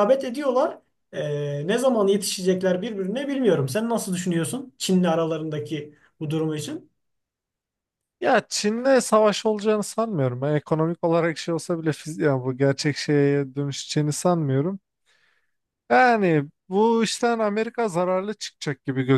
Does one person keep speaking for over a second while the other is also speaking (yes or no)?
no